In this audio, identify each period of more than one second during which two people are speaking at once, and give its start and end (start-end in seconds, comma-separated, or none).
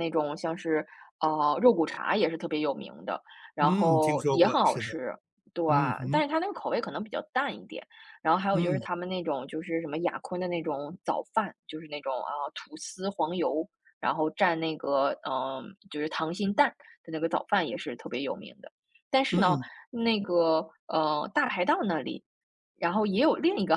3.6-4.9